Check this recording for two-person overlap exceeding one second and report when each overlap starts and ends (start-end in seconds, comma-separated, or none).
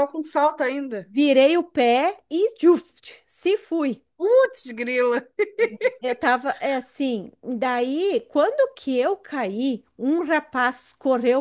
none